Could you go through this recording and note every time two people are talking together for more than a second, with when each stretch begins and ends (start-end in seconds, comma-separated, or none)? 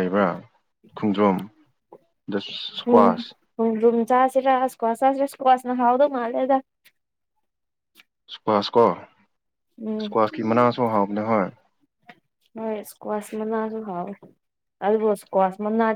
none